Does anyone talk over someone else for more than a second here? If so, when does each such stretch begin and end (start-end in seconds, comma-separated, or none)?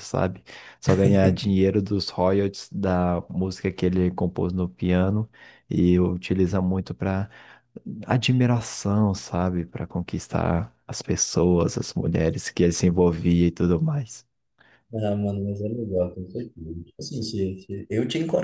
none